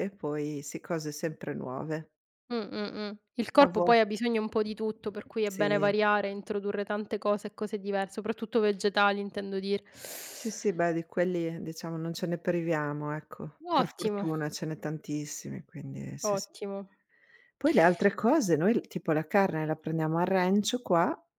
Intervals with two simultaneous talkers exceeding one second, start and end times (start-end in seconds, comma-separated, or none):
none